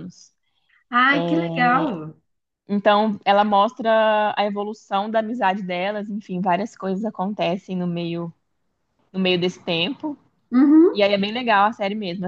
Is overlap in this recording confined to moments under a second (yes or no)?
yes